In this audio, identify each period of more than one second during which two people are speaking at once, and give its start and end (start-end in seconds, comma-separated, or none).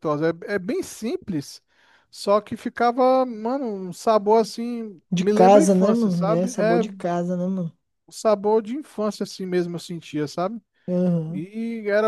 5.1-6.8